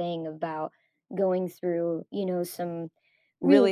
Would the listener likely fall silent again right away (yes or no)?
no